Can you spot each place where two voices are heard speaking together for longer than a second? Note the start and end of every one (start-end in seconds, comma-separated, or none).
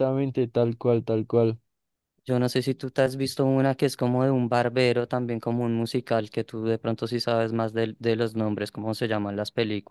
none